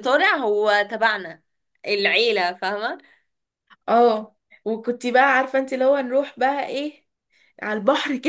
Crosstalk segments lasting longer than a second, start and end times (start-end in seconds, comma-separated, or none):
none